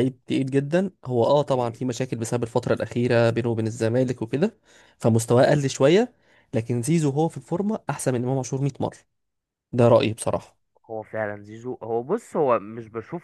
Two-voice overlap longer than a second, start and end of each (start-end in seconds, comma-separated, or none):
none